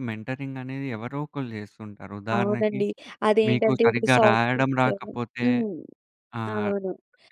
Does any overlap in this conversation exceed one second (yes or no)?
yes